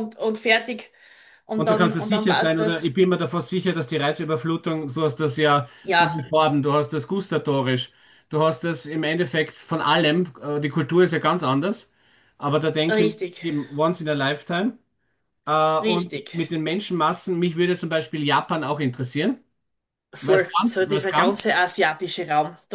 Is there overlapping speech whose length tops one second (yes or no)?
yes